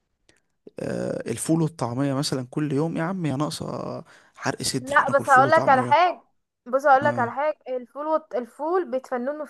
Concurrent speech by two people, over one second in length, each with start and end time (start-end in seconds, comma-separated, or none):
4.8-6.0